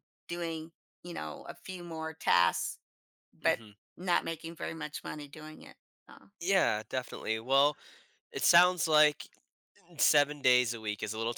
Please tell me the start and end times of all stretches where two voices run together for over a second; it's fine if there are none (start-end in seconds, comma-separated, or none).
none